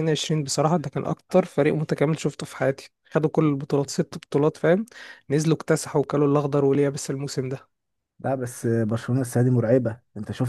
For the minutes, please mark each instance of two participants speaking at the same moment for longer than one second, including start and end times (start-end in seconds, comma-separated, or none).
none